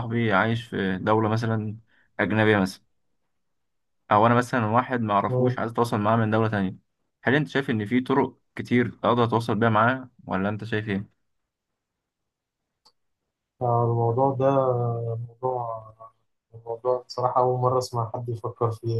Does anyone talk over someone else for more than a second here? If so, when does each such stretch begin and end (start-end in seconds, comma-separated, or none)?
none